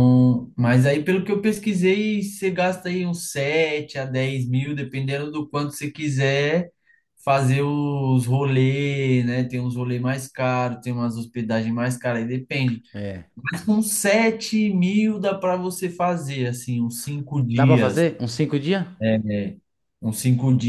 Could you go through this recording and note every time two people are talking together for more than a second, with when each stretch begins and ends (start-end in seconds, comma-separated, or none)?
none